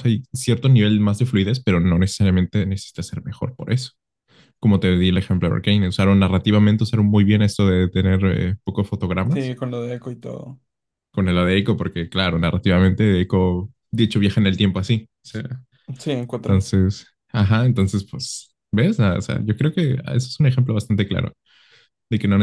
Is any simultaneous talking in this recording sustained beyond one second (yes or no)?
no